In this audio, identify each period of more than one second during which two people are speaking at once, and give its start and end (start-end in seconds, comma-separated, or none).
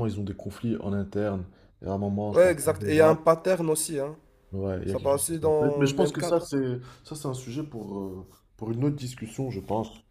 4.8-6.5